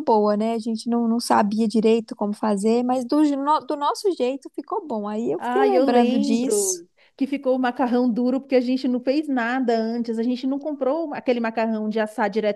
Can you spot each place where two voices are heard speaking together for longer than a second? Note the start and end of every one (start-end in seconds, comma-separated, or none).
5.4-6.8